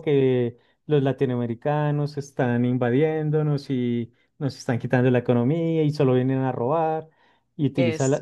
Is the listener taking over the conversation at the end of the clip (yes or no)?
no